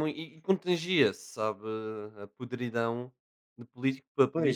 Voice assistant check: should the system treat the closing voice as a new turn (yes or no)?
yes